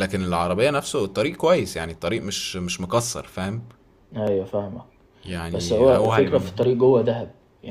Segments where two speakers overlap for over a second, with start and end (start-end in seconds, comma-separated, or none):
5.5-6.8